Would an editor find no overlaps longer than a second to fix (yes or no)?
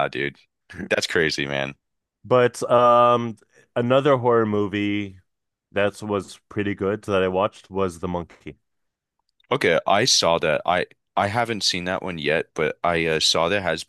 yes